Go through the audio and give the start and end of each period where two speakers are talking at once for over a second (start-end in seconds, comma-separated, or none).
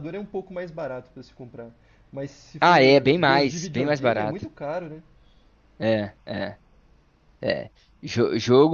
2.6-4.4